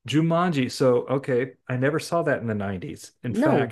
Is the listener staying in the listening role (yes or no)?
yes